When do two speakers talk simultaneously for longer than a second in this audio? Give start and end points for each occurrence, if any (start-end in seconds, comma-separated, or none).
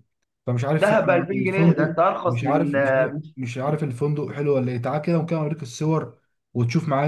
0.8-2.8